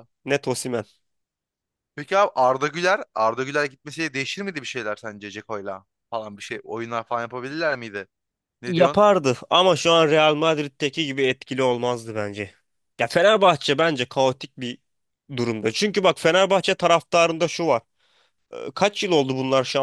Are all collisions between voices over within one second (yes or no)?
yes